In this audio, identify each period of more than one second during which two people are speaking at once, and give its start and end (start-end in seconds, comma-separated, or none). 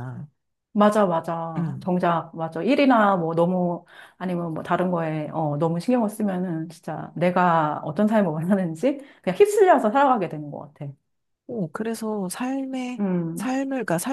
none